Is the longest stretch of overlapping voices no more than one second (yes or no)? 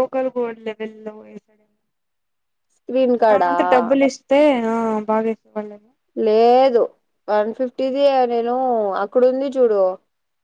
yes